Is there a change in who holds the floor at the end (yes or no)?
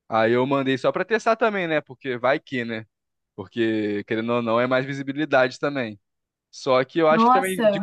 no